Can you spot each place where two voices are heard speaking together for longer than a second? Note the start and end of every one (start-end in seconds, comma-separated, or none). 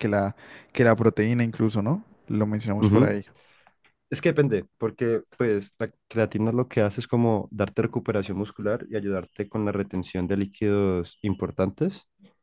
none